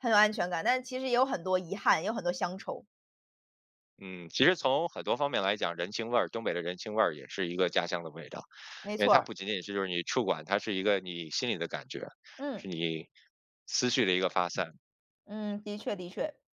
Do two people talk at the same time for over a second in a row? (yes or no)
no